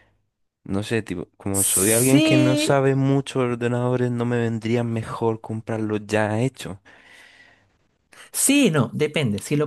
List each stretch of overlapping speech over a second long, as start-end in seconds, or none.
1.5-2.8